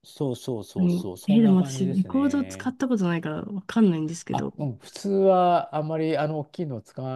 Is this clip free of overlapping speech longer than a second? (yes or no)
no